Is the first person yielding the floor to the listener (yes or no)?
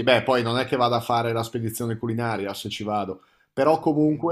no